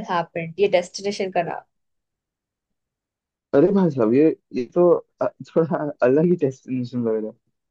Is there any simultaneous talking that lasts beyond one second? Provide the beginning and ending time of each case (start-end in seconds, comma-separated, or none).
none